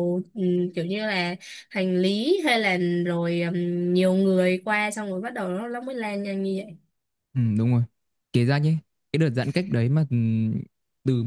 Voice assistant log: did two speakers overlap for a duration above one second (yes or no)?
no